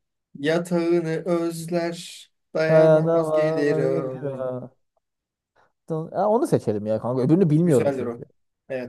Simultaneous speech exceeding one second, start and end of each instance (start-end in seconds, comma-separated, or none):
2.7-4.1